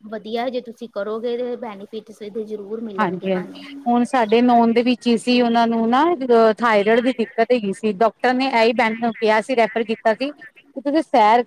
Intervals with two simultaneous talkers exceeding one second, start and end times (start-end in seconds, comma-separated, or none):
none